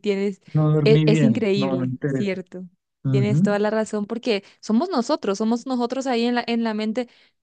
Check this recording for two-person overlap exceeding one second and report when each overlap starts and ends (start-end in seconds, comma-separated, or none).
0.8-2.4